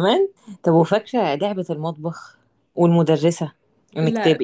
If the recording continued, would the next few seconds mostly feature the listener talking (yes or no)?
no